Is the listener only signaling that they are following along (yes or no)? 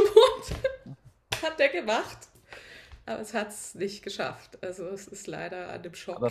no